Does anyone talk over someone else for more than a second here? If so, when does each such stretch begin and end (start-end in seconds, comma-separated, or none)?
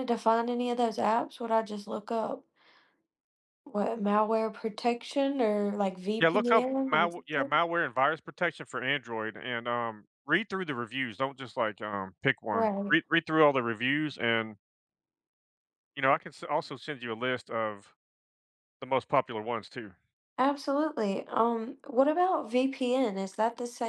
6.2-7.6